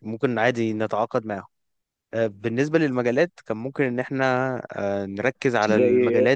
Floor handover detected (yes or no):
no